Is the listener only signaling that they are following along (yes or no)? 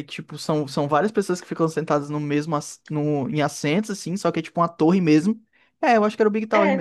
no